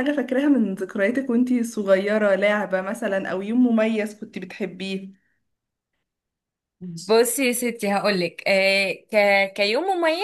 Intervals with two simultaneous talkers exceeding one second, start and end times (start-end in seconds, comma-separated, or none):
none